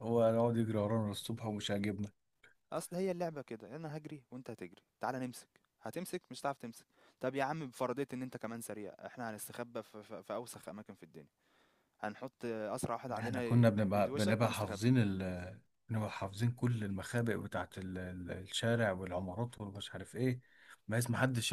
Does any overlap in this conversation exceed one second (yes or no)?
yes